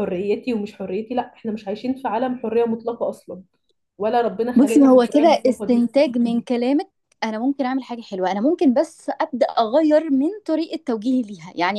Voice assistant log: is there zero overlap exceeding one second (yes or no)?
no